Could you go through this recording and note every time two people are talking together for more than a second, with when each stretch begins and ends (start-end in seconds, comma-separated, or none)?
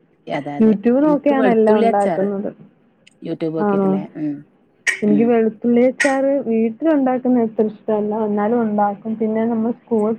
0.6-2.3